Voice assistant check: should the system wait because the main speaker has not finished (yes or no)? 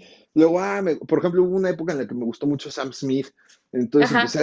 yes